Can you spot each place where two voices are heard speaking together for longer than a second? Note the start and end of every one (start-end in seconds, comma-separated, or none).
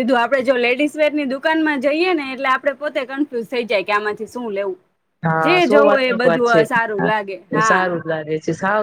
5.5-7.7